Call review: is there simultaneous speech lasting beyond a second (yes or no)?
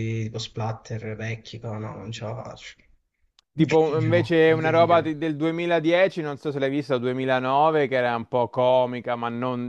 yes